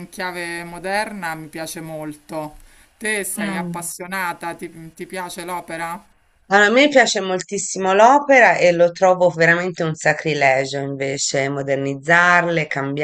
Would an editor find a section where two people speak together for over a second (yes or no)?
no